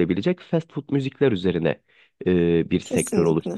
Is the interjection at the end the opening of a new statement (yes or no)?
no